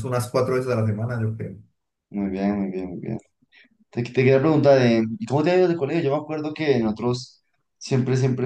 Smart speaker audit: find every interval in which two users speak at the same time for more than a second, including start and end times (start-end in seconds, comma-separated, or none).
none